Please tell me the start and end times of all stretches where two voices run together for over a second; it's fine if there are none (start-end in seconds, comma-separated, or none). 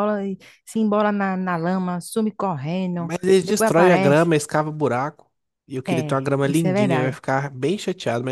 3.0-4.3, 5.9-7.2